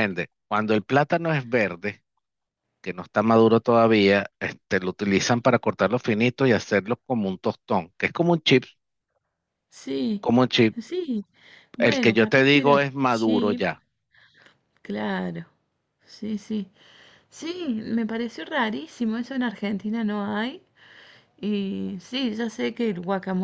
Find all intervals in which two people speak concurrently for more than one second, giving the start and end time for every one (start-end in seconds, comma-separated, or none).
11.8-13.7